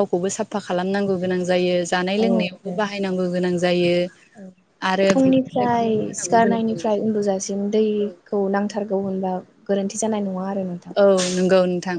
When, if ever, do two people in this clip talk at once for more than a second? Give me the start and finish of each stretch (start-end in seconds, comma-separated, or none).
5.1-7.1